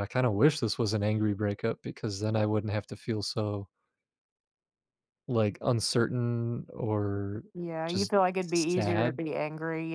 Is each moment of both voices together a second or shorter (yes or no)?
no